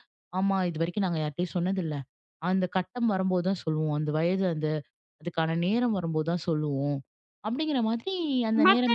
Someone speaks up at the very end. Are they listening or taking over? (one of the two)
taking over